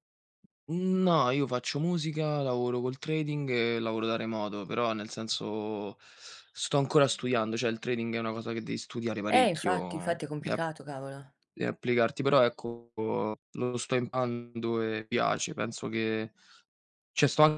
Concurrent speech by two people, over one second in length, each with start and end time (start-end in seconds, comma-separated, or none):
9.3-10.7